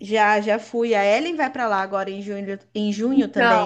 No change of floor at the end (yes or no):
no